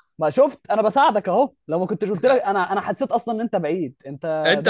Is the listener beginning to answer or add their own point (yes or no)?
yes